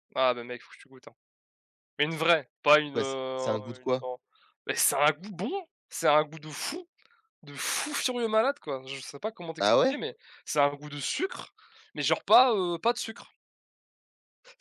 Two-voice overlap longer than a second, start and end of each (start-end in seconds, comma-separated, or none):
2.7-4.0